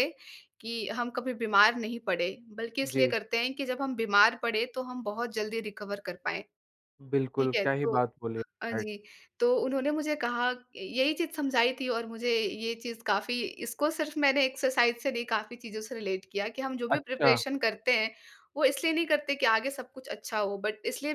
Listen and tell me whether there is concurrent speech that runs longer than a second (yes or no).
no